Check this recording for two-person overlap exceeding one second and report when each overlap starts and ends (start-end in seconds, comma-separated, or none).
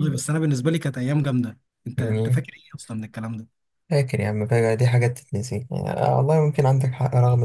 none